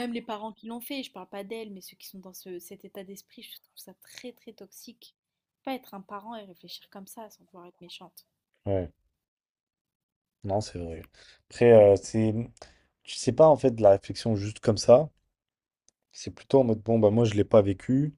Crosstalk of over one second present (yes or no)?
no